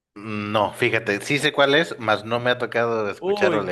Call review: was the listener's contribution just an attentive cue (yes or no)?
no